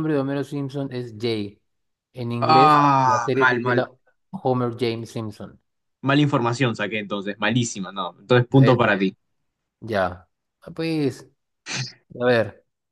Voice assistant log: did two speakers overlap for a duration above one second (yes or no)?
yes